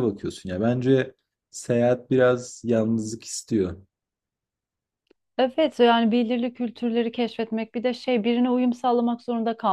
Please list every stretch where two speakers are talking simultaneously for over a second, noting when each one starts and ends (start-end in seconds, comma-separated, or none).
none